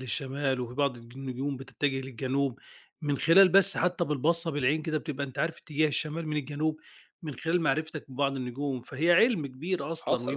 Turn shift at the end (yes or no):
no